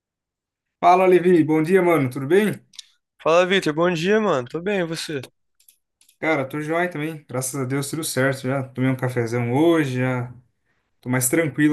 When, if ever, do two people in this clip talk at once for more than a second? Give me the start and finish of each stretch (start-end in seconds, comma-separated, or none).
none